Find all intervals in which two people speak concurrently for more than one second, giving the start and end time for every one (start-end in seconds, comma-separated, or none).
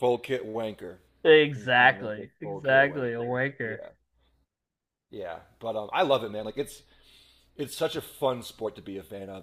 1.5-3.8